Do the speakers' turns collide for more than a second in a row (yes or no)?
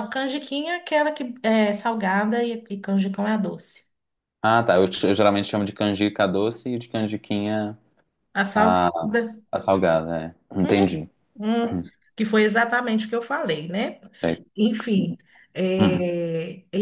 no